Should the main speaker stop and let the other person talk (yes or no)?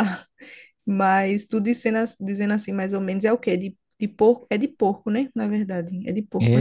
yes